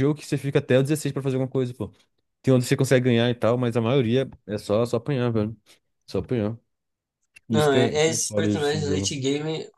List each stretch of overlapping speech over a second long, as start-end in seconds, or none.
7.5-9.2